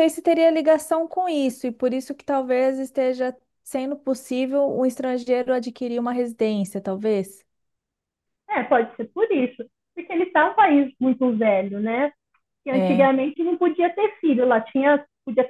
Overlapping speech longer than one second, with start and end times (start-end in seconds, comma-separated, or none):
none